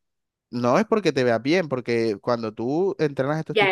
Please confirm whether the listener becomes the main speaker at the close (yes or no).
yes